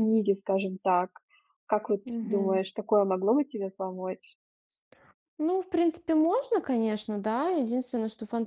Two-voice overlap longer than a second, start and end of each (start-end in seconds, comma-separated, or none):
none